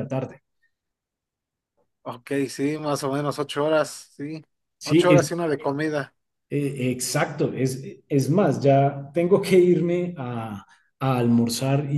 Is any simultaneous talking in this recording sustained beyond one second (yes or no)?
no